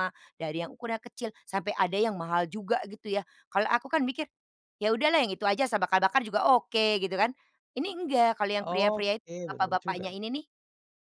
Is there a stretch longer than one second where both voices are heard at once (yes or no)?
yes